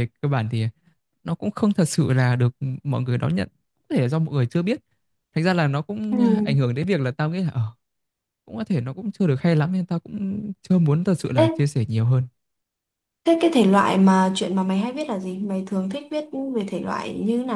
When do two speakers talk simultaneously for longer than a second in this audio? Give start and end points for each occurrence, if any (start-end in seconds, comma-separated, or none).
none